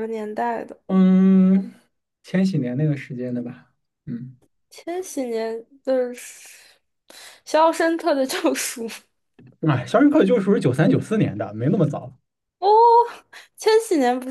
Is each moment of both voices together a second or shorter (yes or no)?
yes